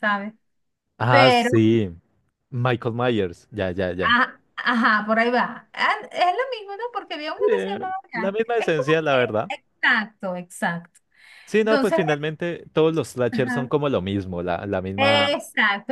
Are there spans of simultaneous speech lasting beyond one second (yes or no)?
yes